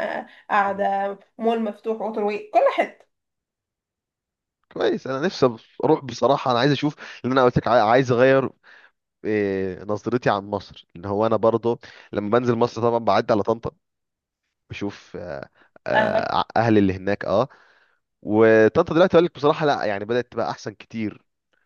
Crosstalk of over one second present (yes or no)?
no